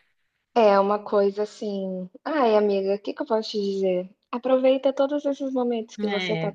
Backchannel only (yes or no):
yes